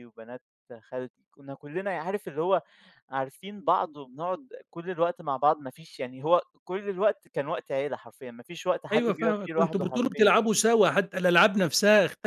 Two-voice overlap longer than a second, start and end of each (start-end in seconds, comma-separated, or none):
8.9-10.3